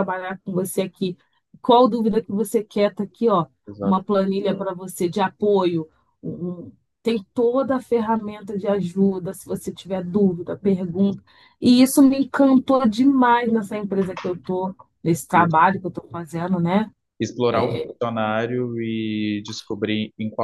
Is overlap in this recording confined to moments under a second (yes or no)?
yes